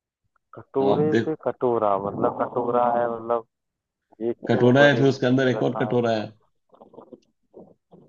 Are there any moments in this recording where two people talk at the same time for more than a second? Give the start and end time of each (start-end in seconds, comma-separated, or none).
4.5-6.0